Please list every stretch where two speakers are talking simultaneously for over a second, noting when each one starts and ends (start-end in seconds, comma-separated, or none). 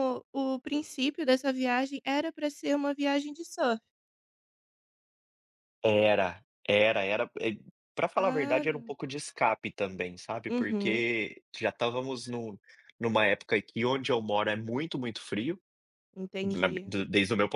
none